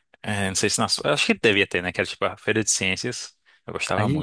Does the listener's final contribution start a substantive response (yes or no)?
yes